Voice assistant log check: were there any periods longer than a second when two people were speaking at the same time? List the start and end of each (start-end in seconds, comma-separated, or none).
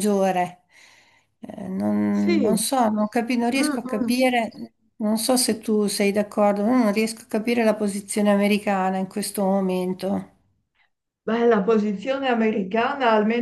none